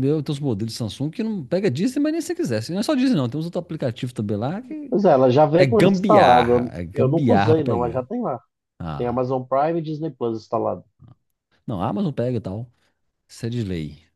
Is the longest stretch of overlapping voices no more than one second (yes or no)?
no